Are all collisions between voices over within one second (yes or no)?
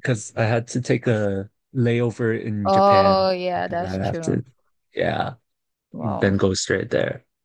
no